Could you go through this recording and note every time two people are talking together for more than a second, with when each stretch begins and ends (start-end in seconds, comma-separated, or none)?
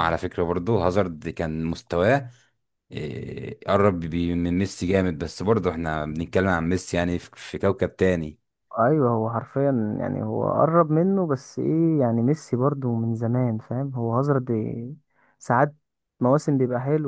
none